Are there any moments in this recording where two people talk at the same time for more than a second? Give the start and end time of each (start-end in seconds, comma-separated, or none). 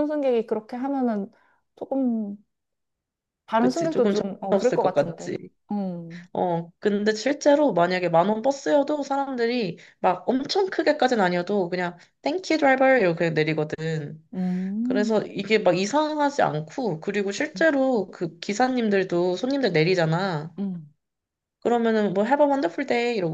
3.6-5.4